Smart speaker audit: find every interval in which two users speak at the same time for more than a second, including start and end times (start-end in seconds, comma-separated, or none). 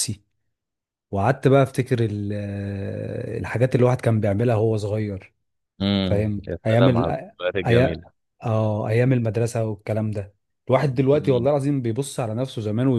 6.0-8.0